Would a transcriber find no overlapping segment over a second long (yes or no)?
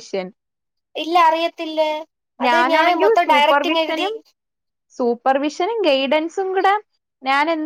no